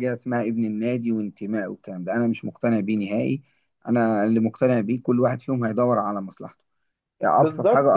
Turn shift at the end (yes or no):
yes